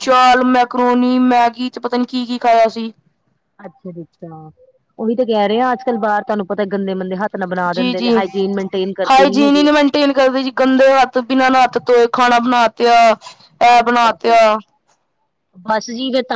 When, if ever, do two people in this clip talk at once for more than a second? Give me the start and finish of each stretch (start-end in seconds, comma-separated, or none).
none